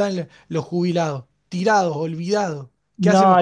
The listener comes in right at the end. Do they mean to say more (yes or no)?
yes